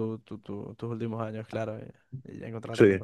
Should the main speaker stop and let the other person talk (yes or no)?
no